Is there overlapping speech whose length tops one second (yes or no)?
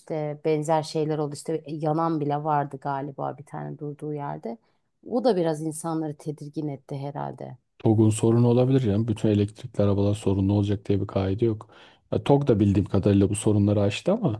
no